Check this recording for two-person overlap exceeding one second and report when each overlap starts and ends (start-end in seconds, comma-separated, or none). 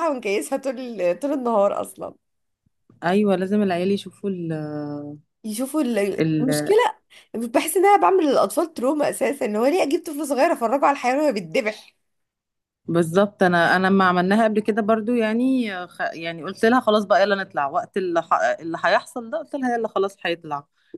none